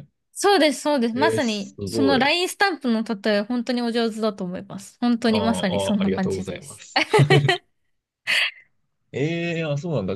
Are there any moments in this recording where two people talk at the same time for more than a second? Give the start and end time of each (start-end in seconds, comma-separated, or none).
1.1-2.4, 5.3-6.8